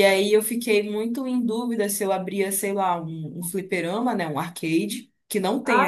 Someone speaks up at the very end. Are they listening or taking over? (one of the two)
listening